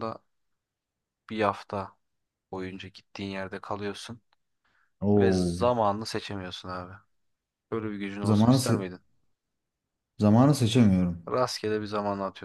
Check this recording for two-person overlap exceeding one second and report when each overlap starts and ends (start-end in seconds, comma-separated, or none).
none